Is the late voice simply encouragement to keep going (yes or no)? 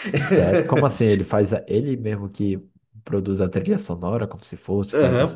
no